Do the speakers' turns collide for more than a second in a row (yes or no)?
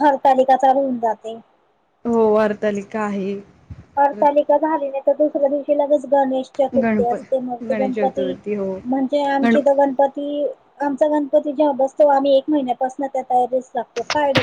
yes